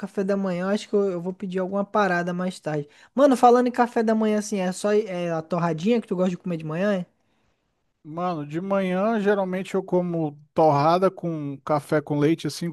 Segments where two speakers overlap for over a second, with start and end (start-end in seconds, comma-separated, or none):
none